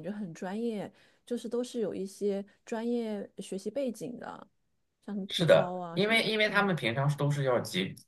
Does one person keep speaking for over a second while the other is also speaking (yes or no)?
yes